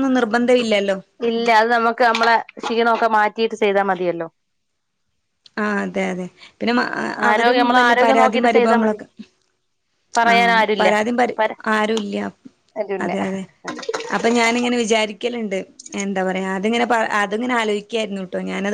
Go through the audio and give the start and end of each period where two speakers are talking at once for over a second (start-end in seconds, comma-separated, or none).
7.3-9.0